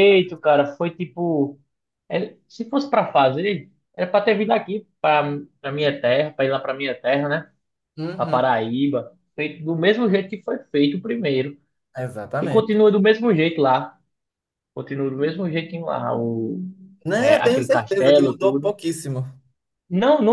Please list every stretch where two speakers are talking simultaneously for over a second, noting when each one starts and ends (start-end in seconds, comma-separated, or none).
17.1-18.7